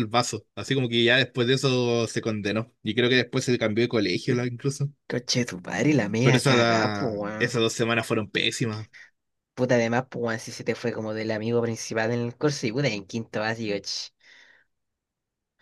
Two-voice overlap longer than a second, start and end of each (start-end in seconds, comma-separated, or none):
6.2-7.6